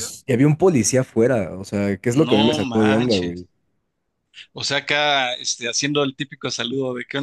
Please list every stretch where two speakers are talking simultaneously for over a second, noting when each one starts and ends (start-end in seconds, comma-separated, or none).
2.1-3.4